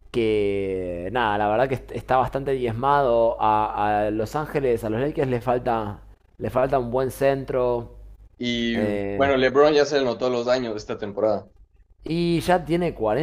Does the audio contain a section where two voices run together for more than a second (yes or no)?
no